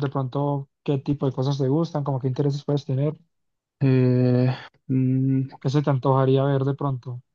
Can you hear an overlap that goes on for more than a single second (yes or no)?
no